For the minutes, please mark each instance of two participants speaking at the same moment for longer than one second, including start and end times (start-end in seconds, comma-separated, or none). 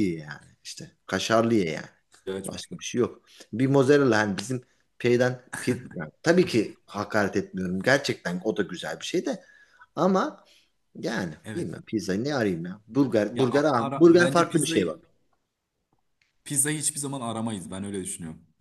13.3-15.0